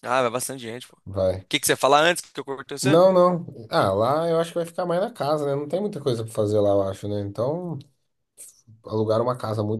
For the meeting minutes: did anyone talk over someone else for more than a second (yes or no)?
no